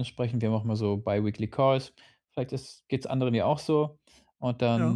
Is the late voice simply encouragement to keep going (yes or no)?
yes